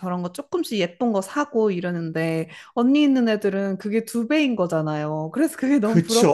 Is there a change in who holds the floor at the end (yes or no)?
yes